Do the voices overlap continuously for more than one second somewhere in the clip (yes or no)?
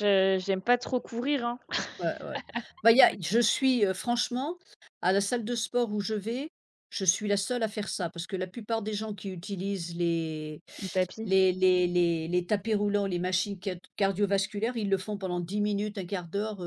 no